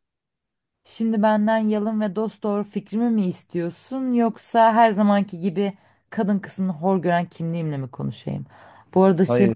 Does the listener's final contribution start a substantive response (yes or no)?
no